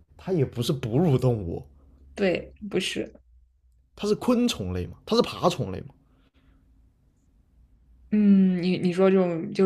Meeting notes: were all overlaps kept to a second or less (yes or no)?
yes